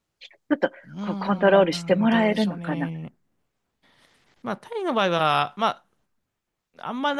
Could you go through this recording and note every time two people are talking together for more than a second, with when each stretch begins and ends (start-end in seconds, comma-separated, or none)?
0.8-2.9